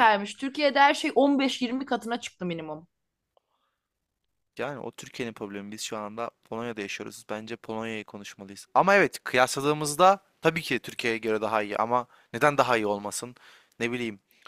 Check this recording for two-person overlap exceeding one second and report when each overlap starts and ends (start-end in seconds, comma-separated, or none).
none